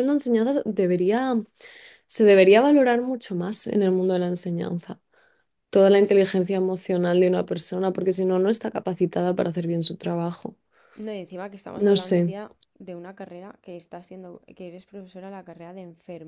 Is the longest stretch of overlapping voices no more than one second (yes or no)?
yes